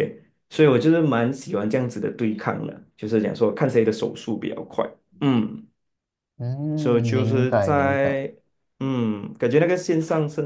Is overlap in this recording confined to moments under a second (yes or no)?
no